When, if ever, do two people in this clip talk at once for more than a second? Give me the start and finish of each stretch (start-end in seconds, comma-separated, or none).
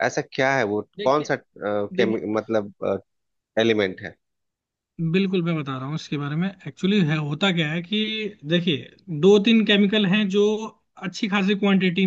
none